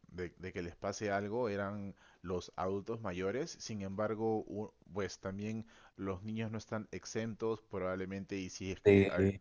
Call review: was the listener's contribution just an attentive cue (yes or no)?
yes